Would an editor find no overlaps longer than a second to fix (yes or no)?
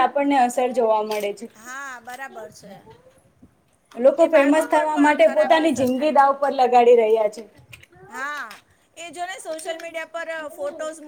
no